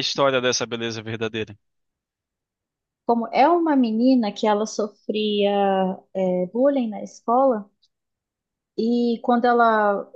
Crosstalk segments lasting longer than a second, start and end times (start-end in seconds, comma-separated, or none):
none